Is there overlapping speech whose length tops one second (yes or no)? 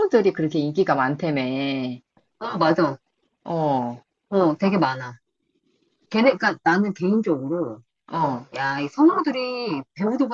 no